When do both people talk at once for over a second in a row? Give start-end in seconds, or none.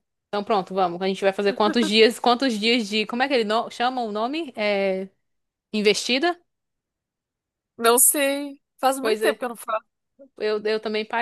none